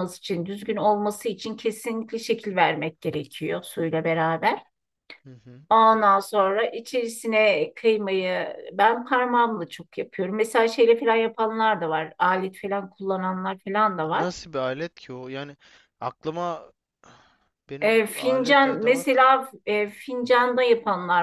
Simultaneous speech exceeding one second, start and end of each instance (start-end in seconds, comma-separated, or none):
17.8-19.2